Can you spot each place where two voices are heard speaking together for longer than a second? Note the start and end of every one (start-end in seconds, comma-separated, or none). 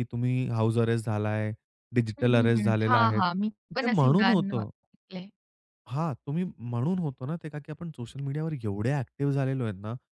2.2-4.7